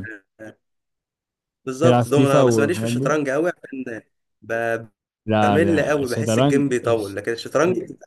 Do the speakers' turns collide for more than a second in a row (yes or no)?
yes